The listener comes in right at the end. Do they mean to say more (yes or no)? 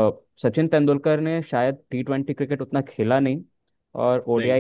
no